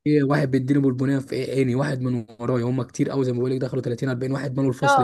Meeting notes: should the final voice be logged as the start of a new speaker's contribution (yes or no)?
yes